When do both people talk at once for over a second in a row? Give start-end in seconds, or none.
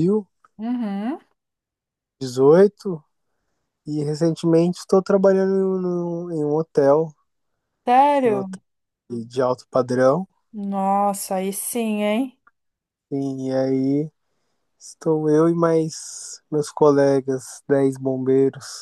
none